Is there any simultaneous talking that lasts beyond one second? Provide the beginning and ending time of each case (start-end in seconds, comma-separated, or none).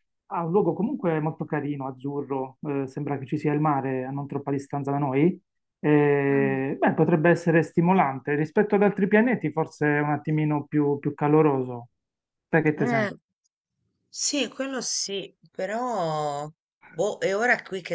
none